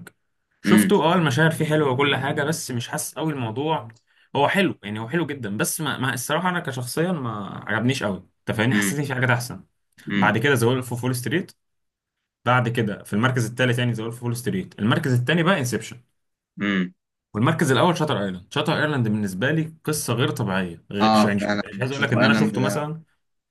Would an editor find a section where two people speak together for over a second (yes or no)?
yes